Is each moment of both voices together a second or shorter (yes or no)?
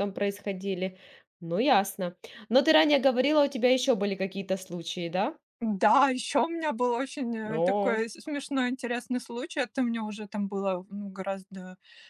yes